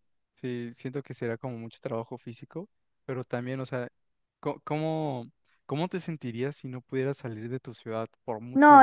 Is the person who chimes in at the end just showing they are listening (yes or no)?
no